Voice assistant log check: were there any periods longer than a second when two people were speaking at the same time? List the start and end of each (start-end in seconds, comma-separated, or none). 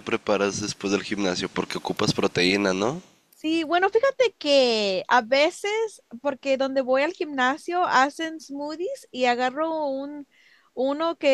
none